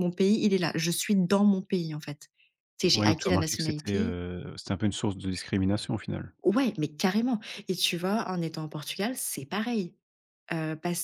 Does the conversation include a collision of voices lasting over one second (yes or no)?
yes